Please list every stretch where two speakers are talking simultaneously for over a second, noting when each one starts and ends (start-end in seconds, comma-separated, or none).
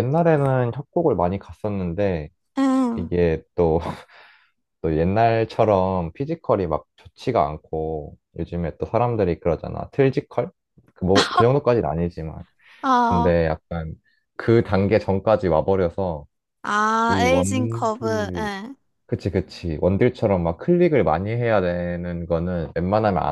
17.1-18.5